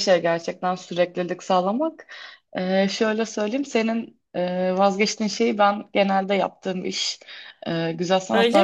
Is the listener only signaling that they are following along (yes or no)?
yes